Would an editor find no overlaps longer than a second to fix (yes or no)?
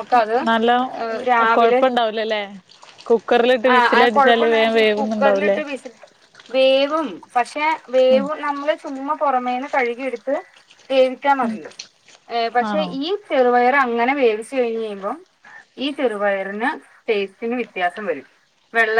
no